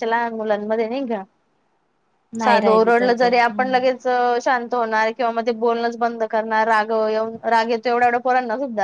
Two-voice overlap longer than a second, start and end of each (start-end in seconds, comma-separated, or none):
2.4-4.0